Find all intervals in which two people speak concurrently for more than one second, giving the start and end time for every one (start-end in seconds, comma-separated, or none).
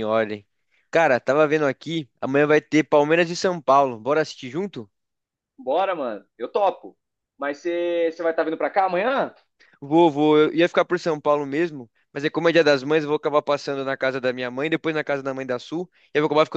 none